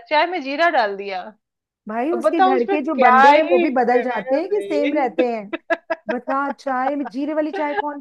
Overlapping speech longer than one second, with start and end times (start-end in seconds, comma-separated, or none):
2.1-5.1